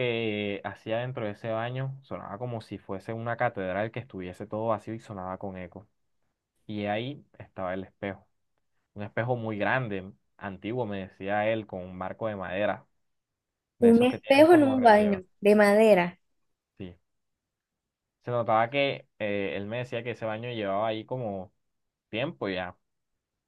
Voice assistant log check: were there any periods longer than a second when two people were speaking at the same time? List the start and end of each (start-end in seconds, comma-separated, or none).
13.8-15.2